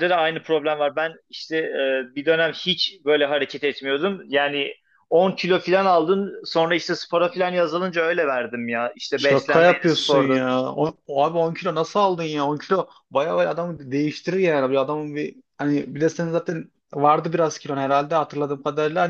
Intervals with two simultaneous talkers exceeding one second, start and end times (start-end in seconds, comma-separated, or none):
9.2-10.5